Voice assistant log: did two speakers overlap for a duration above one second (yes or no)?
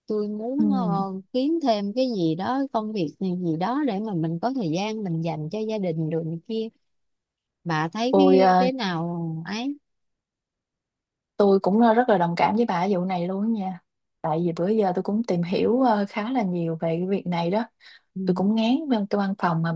no